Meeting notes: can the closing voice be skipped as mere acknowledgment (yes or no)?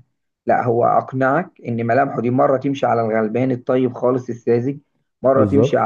yes